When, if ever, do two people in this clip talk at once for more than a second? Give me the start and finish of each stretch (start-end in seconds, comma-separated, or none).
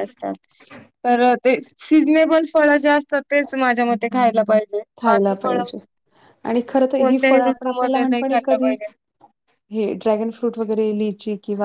7.0-8.7